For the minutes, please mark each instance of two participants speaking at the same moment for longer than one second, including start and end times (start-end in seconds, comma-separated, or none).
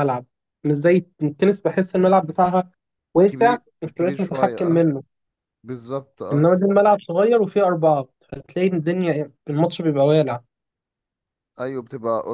3.3-4.8